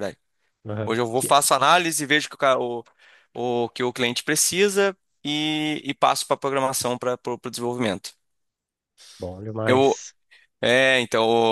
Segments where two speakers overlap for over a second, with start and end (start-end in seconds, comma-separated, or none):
none